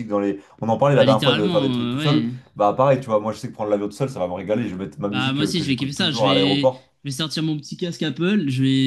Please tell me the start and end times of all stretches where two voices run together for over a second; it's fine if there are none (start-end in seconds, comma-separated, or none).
0.9-2.3, 5.1-6.7